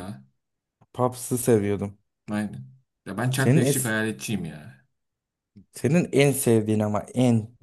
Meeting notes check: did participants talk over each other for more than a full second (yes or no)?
no